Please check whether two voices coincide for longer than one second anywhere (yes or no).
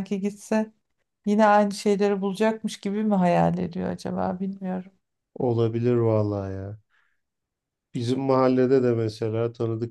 no